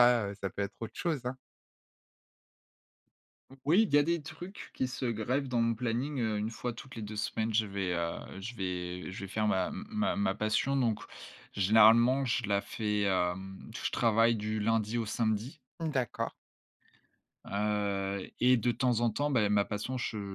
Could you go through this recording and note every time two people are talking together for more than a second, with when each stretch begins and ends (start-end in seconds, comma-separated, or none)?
none